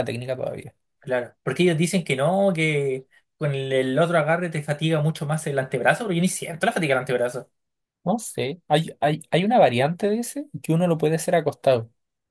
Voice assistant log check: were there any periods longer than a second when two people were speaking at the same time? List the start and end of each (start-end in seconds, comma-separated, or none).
none